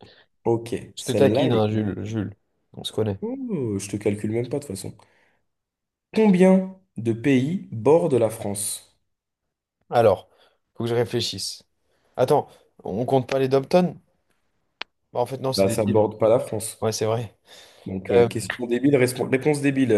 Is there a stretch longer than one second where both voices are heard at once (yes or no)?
yes